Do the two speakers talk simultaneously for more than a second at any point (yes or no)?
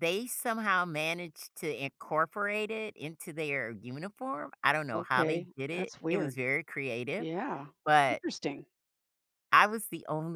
yes